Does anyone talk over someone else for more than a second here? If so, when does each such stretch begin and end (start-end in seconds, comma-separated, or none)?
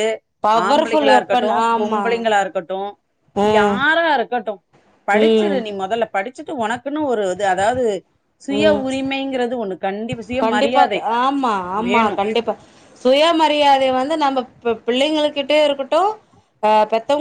0.7-2.0